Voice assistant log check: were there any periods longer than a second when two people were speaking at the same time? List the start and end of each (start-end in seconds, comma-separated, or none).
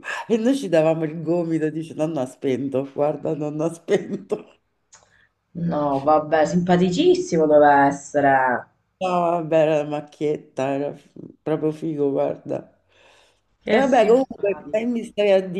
13.7-14.9